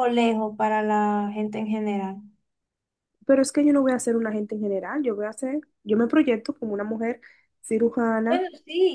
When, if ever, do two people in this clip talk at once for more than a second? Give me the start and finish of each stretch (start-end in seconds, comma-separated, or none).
none